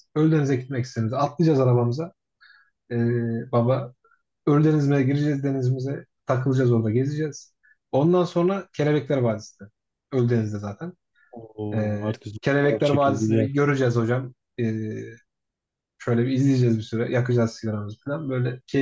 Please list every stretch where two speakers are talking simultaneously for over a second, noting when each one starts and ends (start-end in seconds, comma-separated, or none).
11.7-13.5